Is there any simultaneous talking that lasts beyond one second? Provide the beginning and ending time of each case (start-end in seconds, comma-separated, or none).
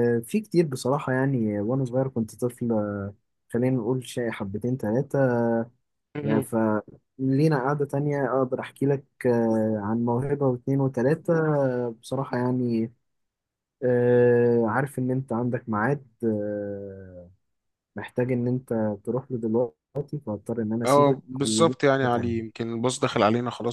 20.9-22.6